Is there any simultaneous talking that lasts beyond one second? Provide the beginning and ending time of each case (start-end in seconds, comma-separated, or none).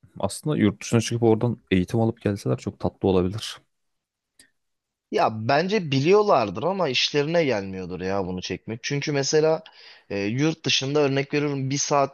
none